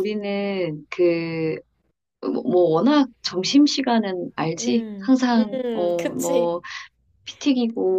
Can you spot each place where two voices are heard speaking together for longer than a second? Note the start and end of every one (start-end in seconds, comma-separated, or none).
4.5-6.5